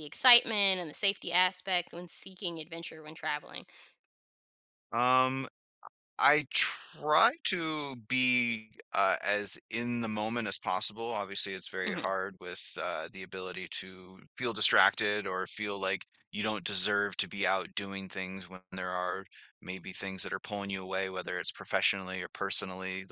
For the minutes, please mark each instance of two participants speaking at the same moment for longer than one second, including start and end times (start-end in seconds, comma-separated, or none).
none